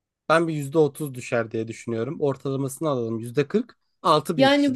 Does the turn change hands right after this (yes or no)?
yes